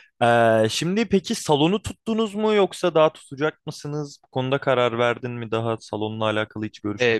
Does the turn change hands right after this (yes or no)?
yes